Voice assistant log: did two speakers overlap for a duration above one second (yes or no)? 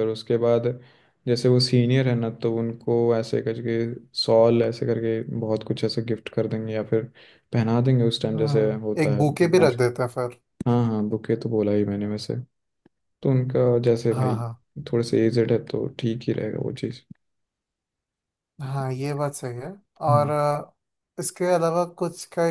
yes